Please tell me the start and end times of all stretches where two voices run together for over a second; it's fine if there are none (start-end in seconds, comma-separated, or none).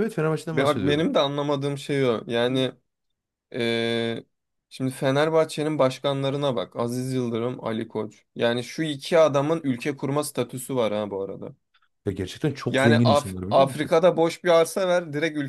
12.7-13.9